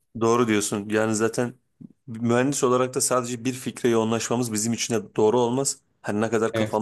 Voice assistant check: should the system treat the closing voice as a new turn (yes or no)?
no